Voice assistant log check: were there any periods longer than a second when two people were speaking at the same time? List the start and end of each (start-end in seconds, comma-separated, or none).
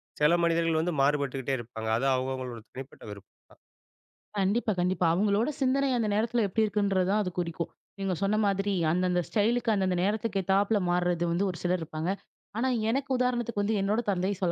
none